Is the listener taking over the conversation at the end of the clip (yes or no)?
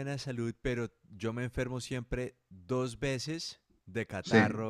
no